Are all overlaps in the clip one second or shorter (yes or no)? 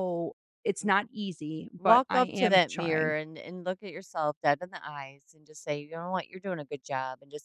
no